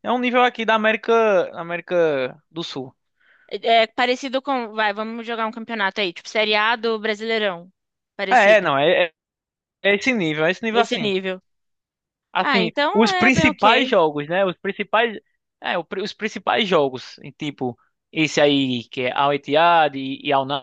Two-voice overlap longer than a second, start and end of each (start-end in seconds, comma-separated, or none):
12.4-13.9